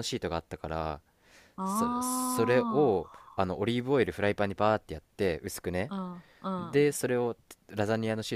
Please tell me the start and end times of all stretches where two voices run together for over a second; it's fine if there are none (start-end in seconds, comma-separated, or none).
1.6-3.3